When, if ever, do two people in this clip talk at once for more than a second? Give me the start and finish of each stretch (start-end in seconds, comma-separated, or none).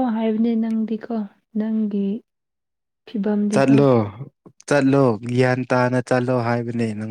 none